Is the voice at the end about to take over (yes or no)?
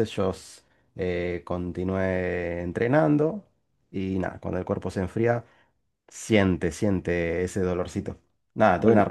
no